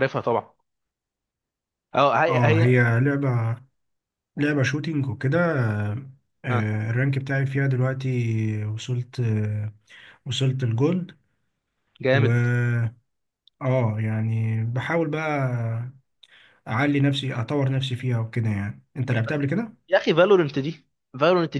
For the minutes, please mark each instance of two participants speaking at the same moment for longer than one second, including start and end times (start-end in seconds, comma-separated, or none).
none